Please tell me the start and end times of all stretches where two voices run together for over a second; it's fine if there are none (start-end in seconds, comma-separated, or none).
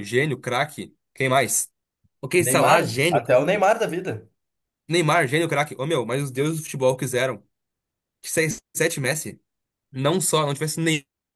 2.4-3.7